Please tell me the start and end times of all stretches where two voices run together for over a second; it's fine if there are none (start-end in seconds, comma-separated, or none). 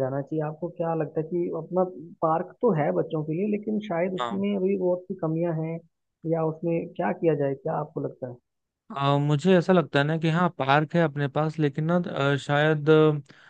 none